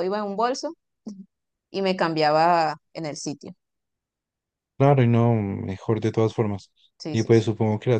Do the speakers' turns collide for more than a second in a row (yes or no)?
no